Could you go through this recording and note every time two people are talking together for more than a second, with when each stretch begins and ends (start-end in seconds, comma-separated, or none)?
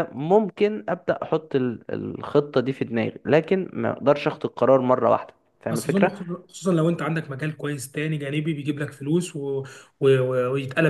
none